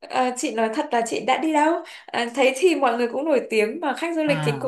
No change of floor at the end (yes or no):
yes